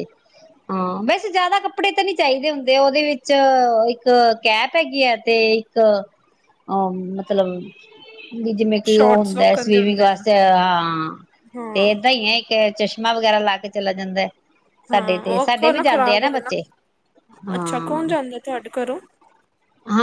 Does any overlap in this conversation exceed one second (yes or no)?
yes